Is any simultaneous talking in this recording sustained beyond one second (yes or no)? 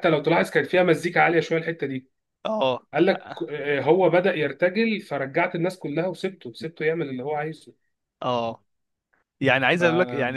no